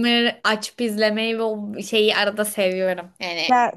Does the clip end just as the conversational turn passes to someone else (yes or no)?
no